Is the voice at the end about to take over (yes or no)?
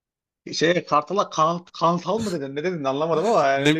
yes